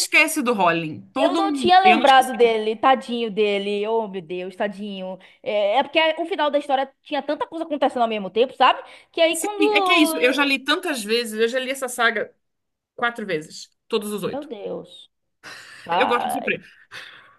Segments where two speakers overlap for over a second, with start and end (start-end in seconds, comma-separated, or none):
1.1-2.6